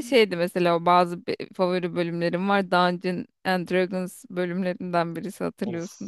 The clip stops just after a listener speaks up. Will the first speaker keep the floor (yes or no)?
no